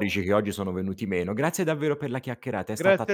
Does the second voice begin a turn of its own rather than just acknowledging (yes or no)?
yes